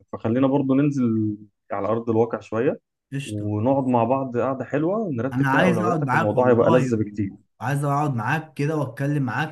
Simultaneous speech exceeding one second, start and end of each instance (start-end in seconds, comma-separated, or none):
5.3-6.9